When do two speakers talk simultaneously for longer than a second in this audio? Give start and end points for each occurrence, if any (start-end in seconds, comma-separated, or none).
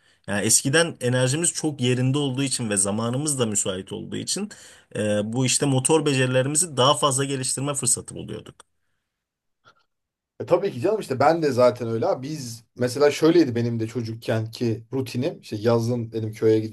none